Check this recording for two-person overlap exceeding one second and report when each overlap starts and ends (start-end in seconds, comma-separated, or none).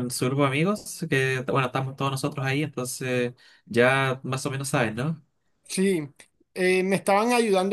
none